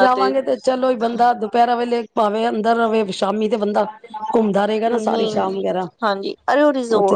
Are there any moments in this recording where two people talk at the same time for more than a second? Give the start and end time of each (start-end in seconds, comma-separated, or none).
none